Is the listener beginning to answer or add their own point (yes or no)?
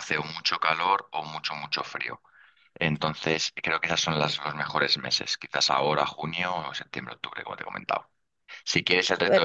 no